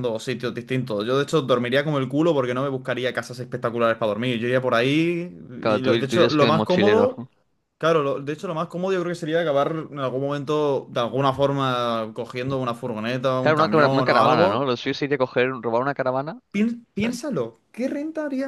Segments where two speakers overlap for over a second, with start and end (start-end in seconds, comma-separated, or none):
5.6-7.1, 13.4-14.7